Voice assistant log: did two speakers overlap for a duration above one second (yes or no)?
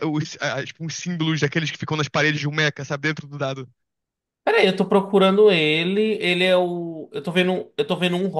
no